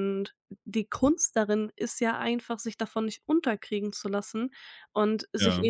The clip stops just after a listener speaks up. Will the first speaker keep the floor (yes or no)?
yes